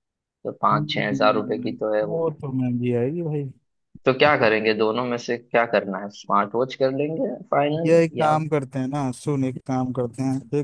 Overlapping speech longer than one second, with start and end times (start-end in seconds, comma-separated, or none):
0.7-2.2